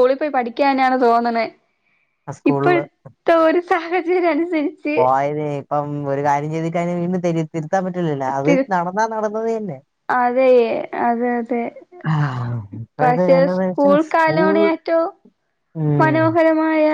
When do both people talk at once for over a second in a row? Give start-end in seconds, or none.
13.0-14.6